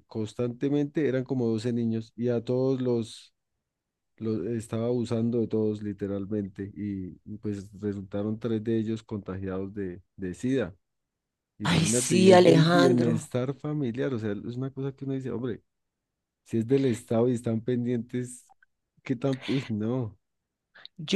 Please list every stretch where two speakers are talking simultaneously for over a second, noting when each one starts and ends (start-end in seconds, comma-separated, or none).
11.6-13.3